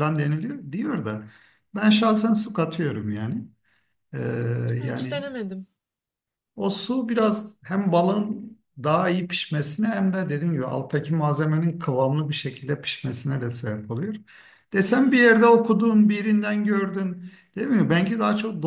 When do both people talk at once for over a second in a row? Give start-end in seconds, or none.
none